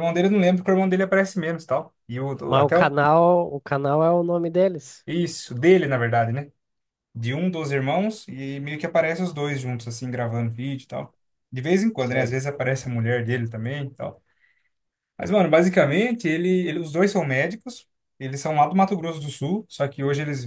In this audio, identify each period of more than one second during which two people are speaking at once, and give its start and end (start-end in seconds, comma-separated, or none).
none